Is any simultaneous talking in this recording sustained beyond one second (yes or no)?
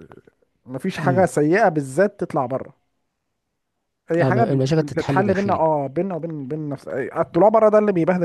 yes